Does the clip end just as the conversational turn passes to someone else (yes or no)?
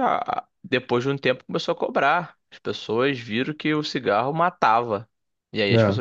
no